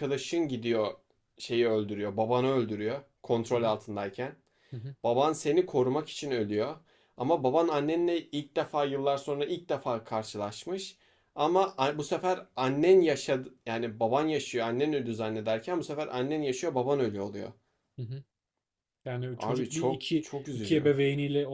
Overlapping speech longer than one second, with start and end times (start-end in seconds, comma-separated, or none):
19.4-20.9